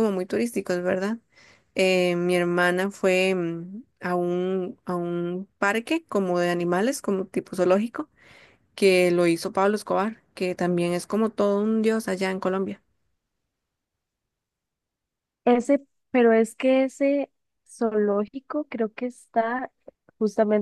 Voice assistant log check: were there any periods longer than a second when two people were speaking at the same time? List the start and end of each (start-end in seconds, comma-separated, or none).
none